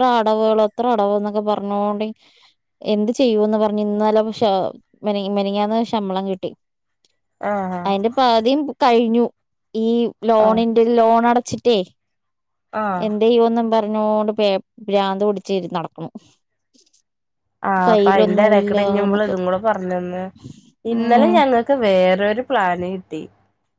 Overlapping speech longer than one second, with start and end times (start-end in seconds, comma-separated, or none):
17.9-19.3